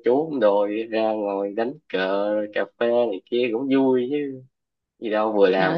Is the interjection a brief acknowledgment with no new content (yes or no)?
no